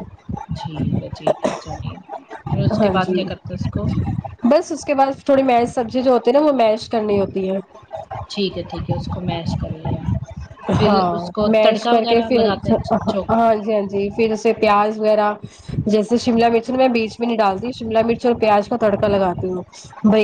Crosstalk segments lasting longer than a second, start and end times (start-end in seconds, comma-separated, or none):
10.8-12.7